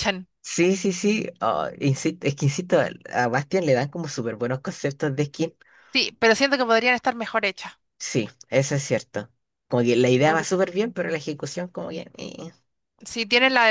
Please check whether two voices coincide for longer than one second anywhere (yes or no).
no